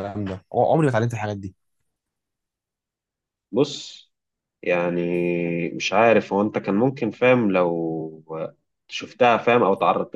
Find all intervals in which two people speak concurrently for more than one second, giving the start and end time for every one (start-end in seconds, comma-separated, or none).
none